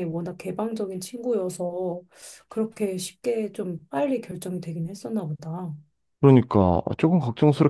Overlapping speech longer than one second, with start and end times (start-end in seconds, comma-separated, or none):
none